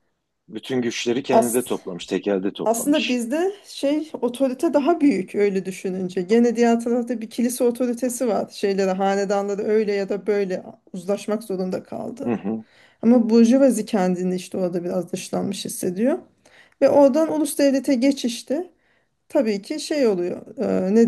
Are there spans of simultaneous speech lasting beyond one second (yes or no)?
no